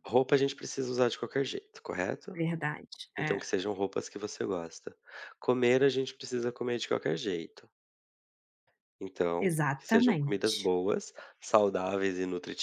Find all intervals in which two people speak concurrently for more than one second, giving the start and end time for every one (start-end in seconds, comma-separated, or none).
9.4-10.7